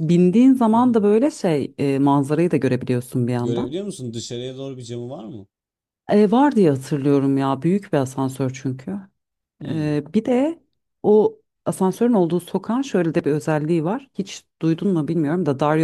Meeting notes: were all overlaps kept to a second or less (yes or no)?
yes